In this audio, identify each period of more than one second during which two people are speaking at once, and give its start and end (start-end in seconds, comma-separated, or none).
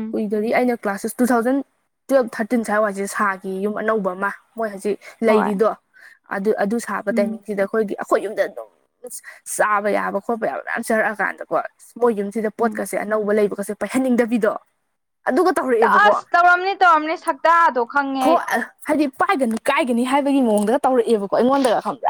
none